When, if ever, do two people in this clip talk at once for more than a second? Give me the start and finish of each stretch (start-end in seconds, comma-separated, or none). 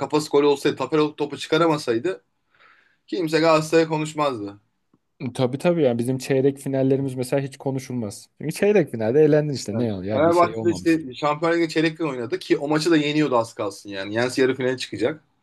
9.7-11.0